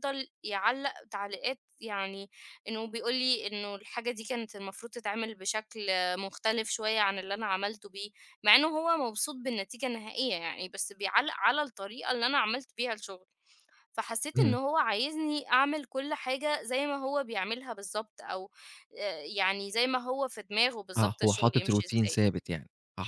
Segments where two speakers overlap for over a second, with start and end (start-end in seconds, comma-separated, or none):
21.0-22.2